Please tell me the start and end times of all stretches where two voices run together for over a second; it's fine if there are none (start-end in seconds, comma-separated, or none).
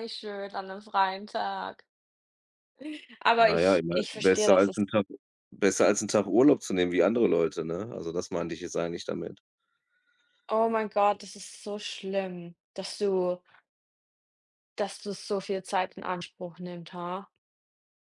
3.4-4.8